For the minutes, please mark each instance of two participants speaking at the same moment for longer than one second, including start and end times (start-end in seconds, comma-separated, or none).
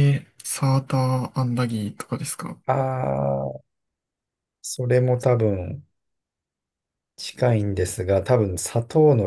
none